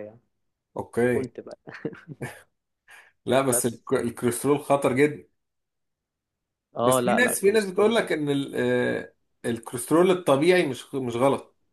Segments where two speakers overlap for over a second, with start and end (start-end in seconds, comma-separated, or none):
6.8-8.0